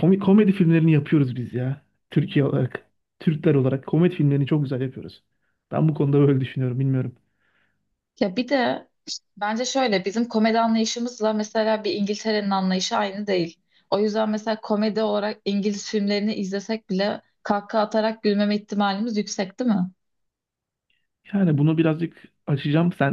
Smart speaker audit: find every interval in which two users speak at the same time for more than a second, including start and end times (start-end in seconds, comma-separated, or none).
none